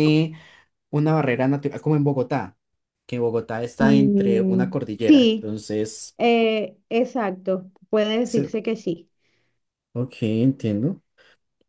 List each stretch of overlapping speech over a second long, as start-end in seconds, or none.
3.8-5.5